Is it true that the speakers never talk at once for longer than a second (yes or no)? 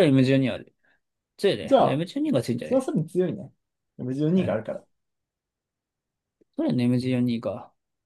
yes